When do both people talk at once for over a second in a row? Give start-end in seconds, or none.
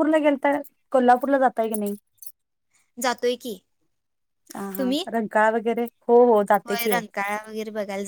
none